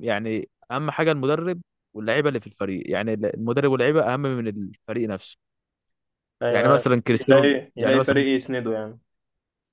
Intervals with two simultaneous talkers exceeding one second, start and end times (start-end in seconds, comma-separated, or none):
6.5-8.2